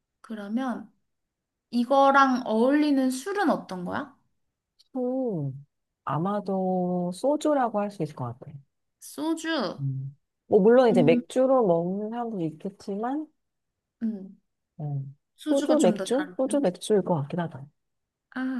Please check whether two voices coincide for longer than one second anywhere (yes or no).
yes